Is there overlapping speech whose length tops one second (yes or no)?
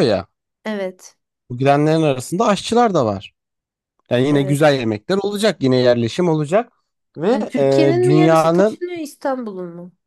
yes